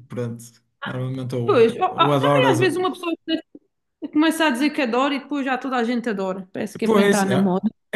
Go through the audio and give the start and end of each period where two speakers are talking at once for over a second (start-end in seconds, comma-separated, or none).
1.4-2.8